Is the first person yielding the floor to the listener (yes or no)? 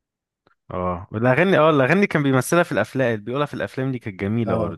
yes